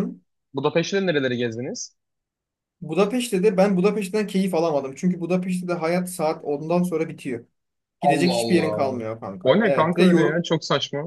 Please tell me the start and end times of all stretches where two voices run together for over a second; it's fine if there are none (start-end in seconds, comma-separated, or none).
8.0-10.4